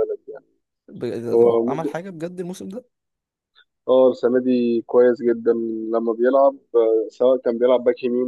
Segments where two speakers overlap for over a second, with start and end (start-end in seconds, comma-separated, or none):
none